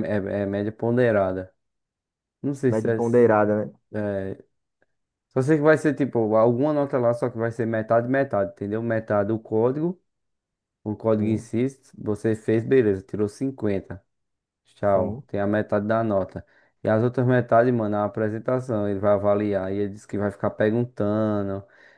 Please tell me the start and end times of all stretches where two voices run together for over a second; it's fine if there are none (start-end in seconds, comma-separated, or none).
none